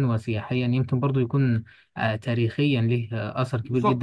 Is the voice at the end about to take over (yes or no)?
yes